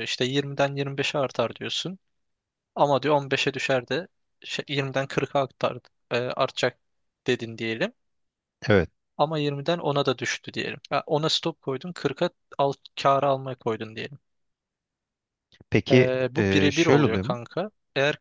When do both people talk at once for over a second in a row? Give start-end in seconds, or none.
15.9-17.4